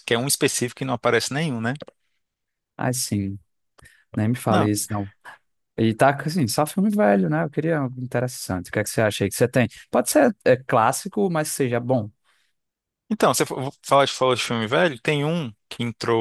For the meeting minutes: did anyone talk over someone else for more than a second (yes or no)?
no